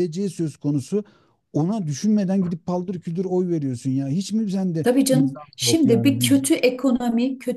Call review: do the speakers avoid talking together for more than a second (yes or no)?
no